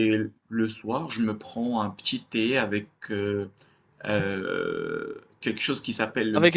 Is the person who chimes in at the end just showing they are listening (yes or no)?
no